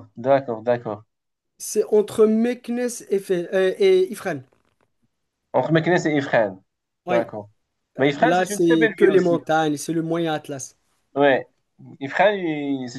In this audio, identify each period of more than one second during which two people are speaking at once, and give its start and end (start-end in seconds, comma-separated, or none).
8.0-9.4